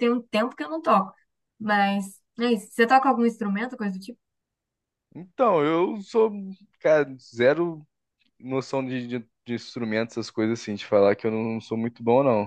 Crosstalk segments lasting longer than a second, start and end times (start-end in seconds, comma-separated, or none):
none